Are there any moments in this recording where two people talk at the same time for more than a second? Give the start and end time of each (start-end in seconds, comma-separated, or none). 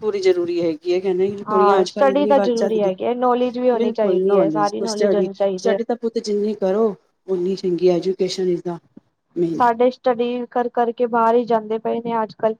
1.5-2.9, 3.7-5.8